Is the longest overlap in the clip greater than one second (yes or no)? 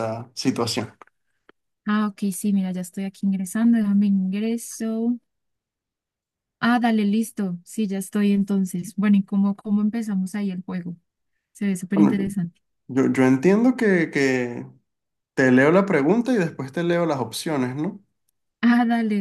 no